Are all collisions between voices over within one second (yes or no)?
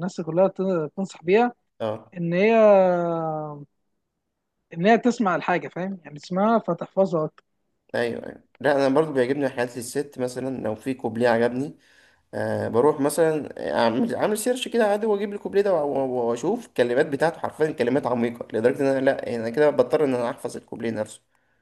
yes